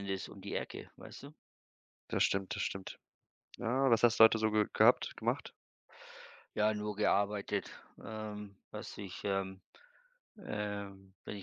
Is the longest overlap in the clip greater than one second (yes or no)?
no